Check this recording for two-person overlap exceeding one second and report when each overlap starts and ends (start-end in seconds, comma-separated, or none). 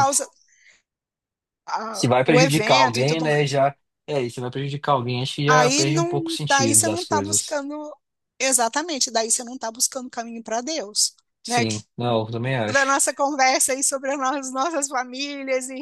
1.9-3.6, 5.5-7.6